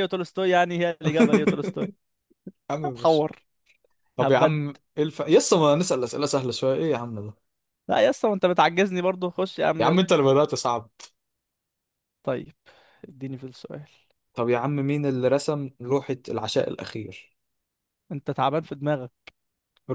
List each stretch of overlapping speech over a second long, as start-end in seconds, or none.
none